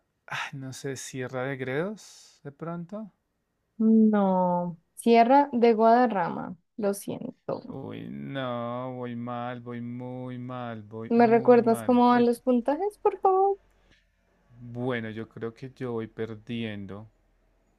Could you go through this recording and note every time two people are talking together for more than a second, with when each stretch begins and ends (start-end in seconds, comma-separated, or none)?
11.1-12.3